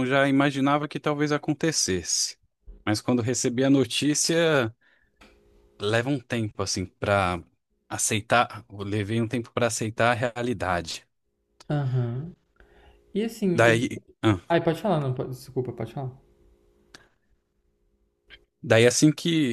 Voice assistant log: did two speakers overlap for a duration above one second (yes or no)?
no